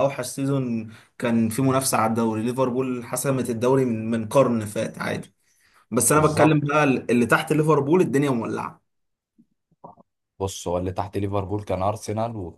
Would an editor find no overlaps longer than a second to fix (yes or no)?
yes